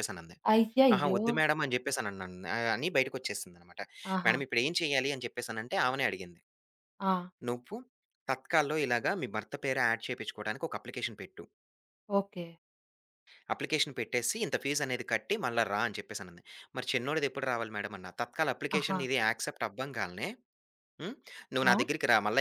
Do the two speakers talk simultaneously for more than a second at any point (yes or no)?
no